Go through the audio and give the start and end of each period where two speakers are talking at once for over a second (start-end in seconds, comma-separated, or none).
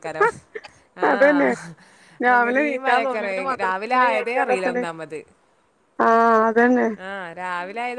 2.3-4.8